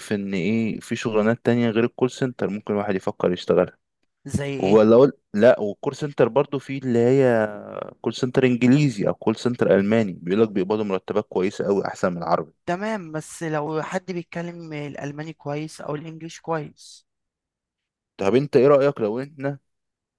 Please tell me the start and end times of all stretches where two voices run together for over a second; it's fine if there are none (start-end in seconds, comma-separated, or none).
none